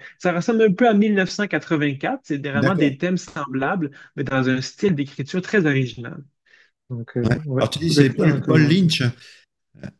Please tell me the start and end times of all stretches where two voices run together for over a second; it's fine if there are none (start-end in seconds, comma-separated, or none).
7.2-8.9